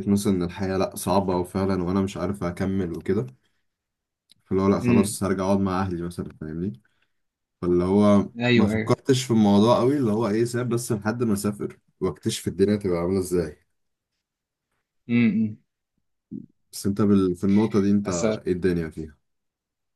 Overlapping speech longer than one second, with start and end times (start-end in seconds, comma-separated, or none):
none